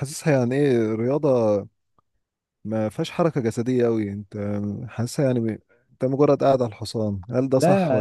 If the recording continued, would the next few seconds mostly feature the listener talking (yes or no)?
yes